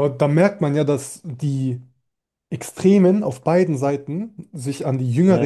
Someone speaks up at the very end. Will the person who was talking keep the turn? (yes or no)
yes